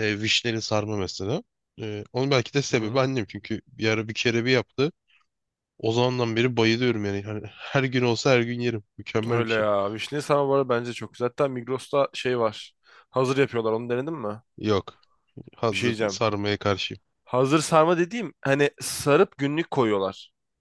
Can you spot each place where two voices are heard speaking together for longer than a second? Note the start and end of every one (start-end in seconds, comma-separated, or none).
none